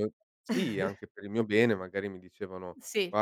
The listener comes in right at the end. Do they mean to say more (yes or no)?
no